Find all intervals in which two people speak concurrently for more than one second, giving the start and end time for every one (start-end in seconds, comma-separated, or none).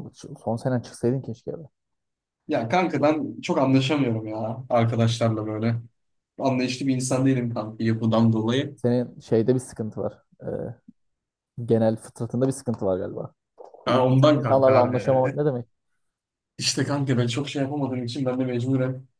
13.9-15.4